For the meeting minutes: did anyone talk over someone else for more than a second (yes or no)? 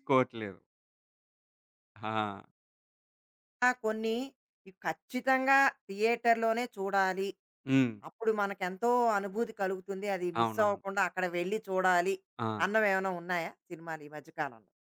no